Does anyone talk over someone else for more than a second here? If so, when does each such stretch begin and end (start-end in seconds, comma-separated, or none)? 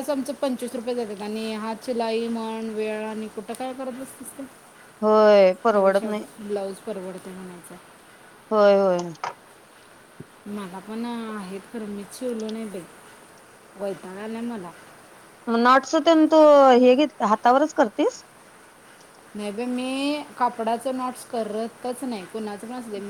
none